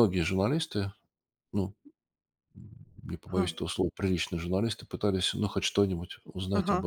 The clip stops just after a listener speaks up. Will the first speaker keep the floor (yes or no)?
no